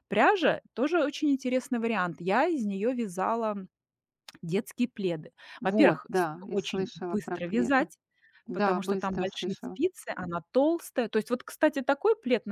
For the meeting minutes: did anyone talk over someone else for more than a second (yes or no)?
yes